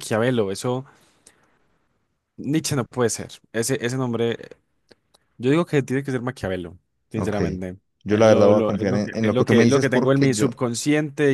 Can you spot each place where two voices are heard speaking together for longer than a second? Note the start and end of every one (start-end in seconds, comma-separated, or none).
8.0-10.6